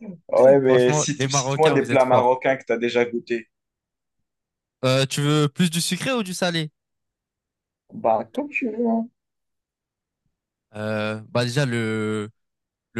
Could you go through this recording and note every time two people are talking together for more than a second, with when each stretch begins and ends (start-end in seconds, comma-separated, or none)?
0.7-2.3